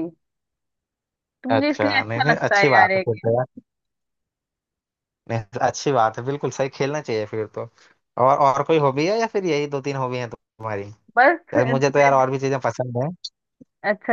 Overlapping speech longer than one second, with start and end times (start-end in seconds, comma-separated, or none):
1.5-3.3